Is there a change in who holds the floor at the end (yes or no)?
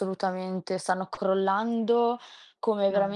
no